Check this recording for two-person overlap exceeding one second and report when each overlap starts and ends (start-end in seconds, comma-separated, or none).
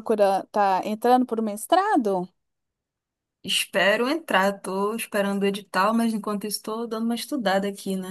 none